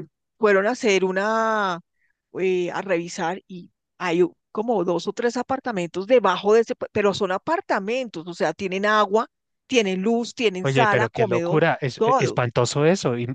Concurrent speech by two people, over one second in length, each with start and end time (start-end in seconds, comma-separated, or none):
10.6-12.4